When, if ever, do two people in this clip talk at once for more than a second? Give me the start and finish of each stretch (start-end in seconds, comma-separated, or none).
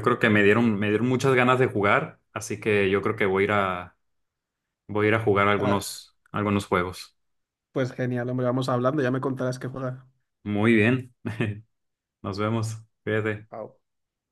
none